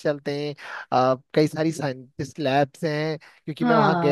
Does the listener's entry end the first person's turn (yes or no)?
yes